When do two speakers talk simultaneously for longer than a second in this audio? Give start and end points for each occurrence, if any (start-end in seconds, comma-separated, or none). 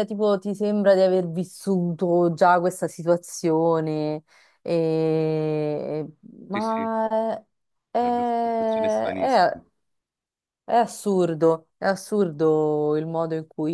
8.0-9.6